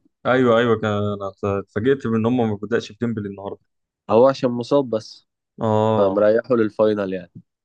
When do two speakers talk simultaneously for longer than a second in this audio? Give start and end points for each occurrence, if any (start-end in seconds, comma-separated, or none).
none